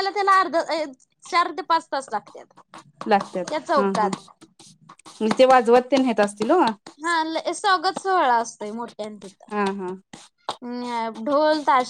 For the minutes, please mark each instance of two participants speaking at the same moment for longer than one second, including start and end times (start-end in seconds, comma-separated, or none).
none